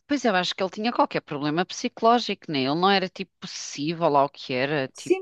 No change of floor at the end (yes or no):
no